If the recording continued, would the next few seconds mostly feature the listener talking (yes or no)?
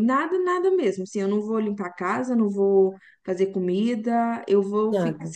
no